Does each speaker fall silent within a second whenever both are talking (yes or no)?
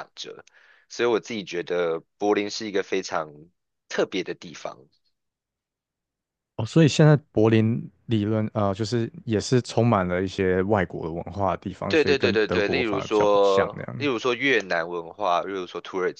no